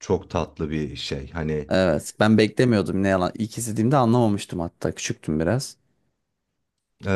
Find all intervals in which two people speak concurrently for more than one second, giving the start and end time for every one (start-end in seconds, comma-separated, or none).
none